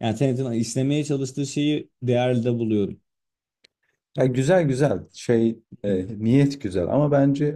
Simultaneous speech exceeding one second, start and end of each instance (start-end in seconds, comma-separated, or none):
none